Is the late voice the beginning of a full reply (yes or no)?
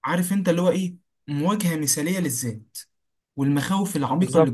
yes